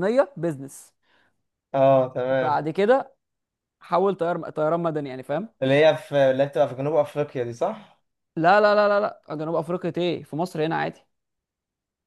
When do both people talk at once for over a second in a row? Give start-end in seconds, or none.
none